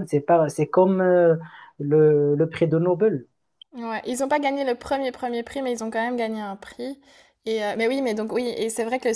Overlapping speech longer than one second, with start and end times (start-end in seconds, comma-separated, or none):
none